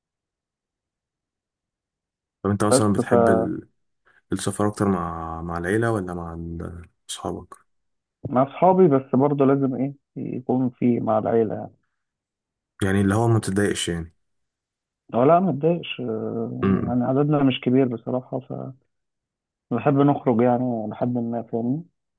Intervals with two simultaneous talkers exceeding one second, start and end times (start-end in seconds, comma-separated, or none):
none